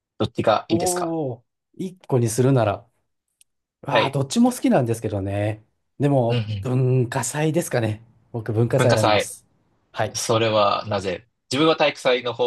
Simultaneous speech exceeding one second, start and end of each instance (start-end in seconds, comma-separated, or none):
none